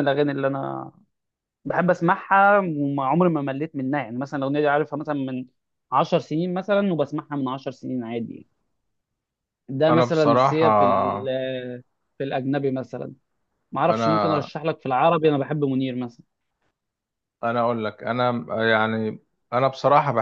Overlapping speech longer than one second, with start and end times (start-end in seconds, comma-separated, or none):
9.9-11.3